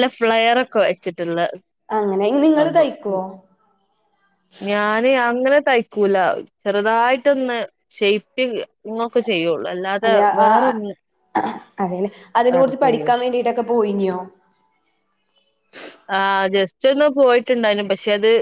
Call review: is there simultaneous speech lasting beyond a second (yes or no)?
no